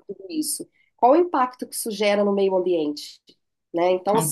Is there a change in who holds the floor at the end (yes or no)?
no